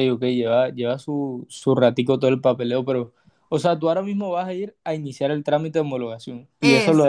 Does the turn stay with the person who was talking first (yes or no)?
yes